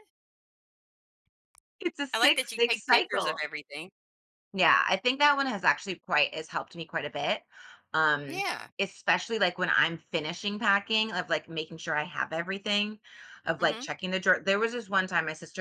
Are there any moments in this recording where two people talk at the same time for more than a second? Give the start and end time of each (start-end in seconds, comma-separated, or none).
2.1-3.4